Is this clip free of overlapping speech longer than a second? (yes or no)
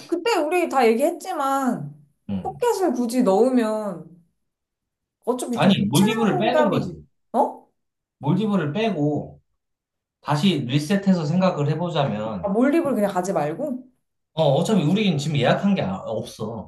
no